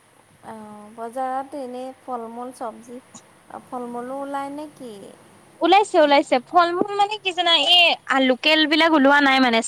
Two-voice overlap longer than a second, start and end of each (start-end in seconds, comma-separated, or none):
none